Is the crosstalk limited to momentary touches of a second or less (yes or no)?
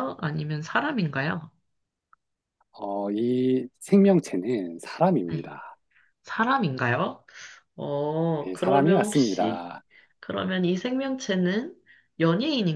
no